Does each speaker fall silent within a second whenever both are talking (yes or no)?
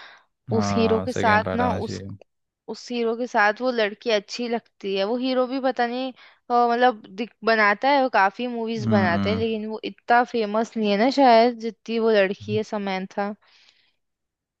no